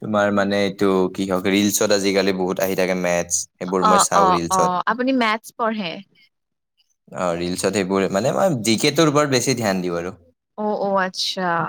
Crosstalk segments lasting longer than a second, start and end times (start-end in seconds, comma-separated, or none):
none